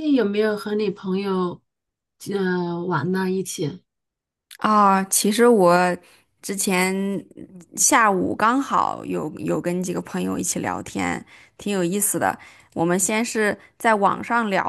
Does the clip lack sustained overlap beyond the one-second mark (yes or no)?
yes